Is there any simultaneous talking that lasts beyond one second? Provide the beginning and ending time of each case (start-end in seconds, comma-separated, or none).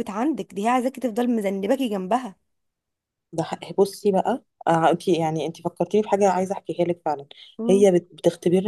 none